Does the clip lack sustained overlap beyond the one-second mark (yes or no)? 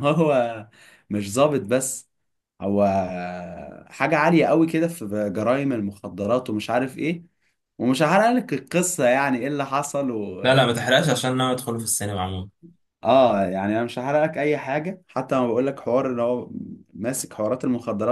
yes